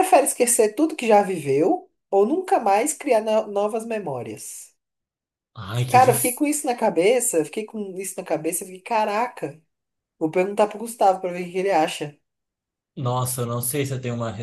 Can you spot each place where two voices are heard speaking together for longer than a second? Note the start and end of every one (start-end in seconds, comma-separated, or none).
none